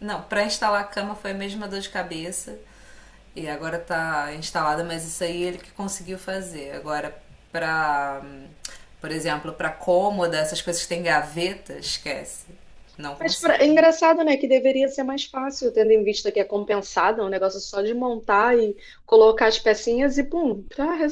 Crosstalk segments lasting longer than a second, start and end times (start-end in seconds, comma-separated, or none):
none